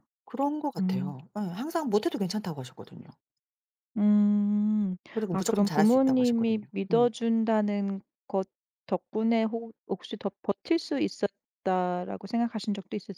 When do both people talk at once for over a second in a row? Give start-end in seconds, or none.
5.1-7.1